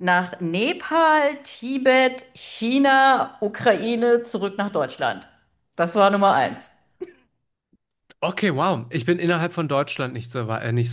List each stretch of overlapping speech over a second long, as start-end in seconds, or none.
none